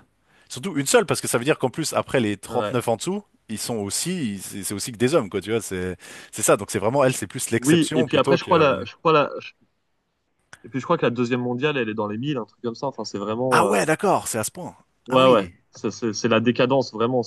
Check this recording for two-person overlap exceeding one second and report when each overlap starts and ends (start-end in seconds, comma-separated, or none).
7.6-8.8